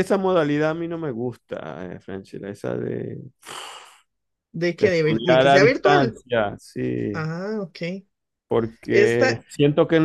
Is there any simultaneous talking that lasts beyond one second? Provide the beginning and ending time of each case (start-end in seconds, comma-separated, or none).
4.8-6.2